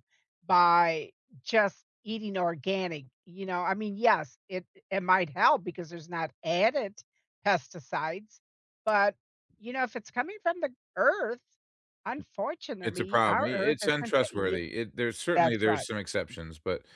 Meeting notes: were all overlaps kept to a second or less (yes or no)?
no